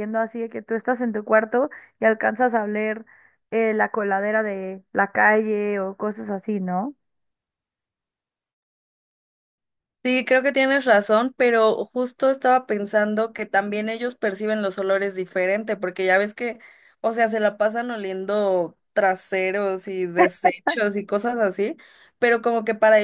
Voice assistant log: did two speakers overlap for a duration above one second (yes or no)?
no